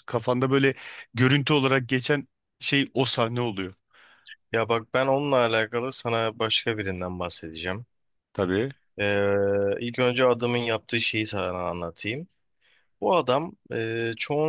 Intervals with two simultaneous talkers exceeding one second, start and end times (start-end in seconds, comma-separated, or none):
none